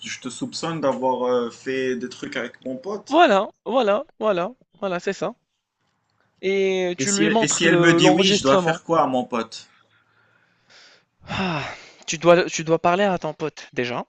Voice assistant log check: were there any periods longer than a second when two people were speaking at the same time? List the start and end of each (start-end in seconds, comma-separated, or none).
7.0-8.8